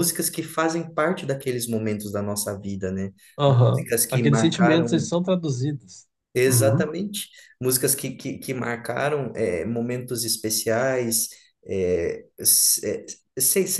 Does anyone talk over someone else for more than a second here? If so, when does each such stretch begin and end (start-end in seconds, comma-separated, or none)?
3.5-5.1